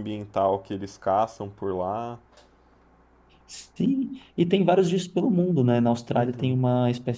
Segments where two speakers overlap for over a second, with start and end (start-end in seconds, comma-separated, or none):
none